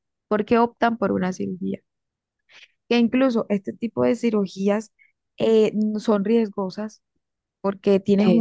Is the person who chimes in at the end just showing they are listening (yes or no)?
yes